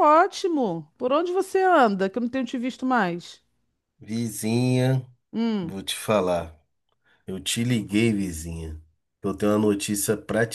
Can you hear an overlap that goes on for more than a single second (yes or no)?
no